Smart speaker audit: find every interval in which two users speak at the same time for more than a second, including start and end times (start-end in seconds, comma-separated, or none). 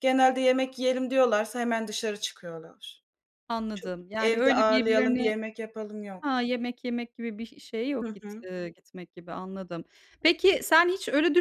3.7-5.3